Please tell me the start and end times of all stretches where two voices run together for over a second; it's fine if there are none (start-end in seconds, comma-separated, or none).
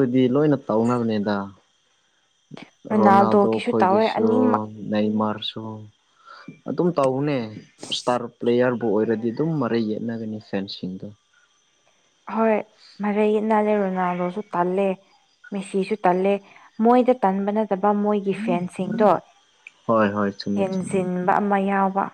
3.0-4.3